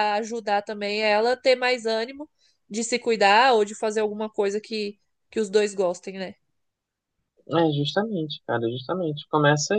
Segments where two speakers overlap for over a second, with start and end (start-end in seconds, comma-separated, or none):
none